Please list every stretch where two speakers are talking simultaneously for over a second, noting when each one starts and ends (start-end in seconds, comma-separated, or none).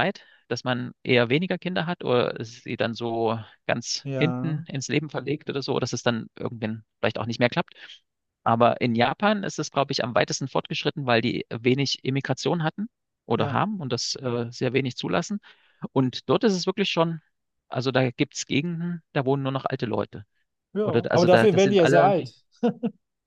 20.8-22.3